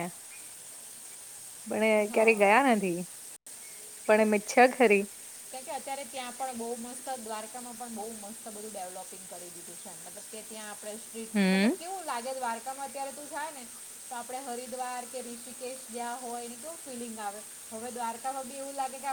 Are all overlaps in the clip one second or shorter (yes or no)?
yes